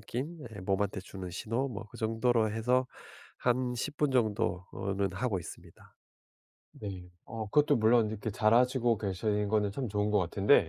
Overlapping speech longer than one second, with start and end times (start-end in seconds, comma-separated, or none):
none